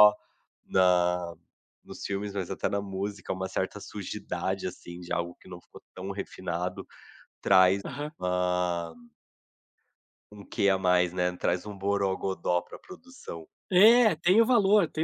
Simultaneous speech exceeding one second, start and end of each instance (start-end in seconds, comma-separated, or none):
none